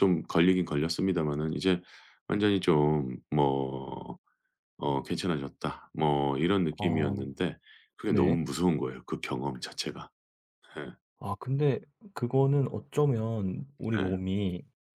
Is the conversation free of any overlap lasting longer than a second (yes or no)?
yes